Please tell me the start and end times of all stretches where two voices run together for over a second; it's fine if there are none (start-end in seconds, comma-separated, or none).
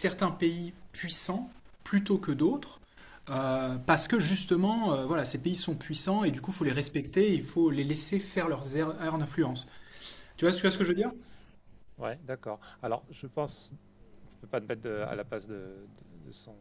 none